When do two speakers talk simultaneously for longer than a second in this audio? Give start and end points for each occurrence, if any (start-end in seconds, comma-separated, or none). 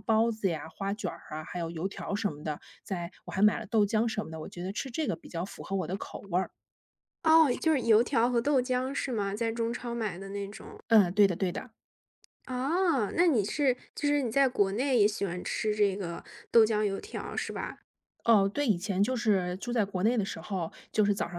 none